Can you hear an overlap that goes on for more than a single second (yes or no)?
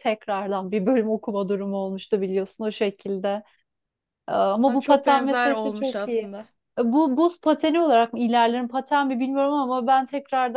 yes